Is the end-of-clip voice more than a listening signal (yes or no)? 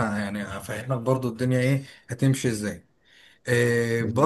no